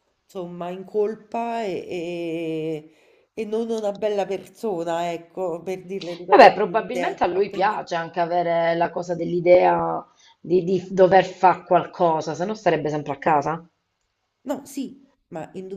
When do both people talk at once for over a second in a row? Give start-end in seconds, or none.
6.3-7.8